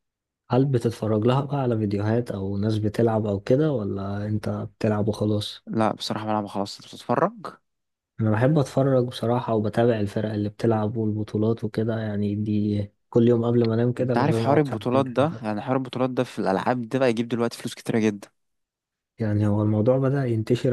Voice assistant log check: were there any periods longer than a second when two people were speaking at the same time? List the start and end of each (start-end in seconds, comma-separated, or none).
14.0-15.6